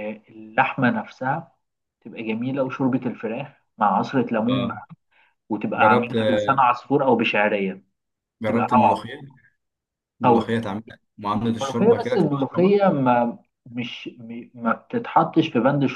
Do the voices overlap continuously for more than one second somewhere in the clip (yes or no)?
yes